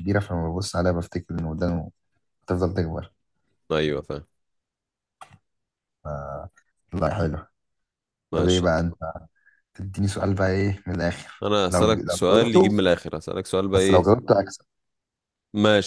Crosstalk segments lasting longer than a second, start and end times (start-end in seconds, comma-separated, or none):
11.4-12.9